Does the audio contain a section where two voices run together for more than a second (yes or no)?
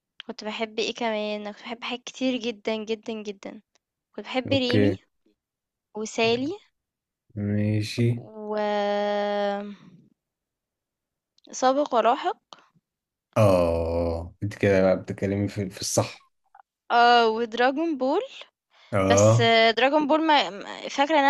no